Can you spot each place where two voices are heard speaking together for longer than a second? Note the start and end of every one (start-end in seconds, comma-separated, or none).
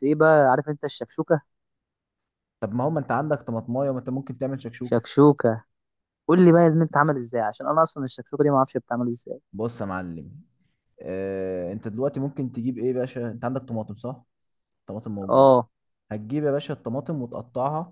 none